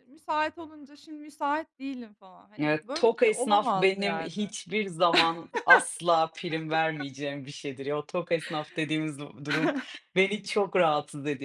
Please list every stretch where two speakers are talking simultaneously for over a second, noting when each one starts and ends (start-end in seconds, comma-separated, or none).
2.6-4.4